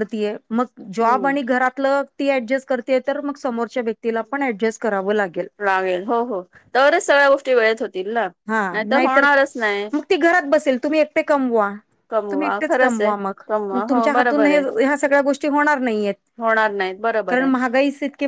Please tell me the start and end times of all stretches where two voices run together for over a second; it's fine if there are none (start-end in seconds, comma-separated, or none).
12.3-14.6